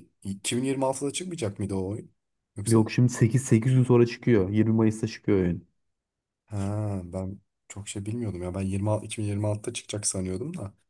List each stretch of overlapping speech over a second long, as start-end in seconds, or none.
none